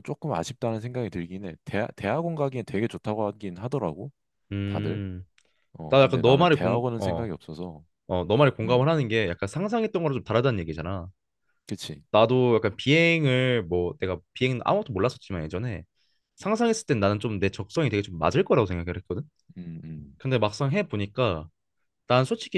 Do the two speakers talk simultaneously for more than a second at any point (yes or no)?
yes